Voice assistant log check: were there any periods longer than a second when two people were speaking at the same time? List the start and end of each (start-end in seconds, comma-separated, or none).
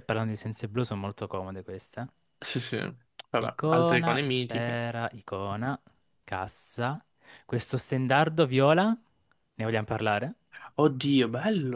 3.4-4.8